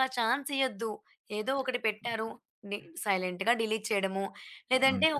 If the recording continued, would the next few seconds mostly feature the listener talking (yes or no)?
no